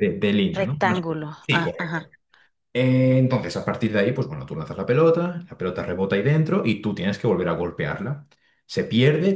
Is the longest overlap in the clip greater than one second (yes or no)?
yes